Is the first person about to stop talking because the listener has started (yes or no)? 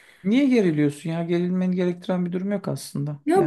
yes